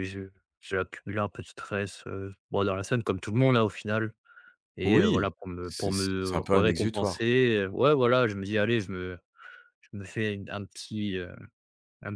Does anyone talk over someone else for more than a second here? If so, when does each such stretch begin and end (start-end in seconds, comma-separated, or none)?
4.8-7.3